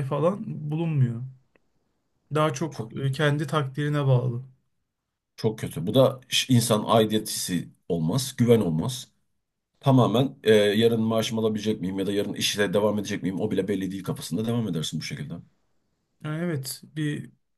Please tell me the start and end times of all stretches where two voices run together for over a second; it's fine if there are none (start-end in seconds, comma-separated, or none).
none